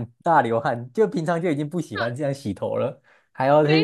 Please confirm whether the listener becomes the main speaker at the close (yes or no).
yes